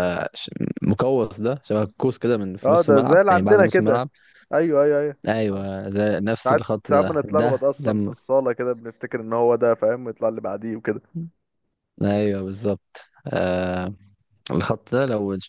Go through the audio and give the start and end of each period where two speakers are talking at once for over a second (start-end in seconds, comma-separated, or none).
2.6-4.0, 6.4-8.1